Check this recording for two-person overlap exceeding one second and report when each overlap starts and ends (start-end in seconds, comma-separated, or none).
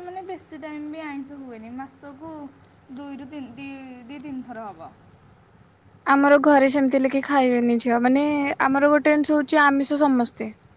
none